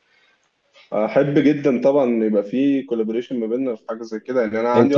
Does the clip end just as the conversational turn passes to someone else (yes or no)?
yes